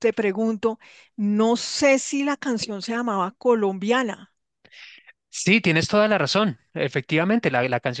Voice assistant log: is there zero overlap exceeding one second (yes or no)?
yes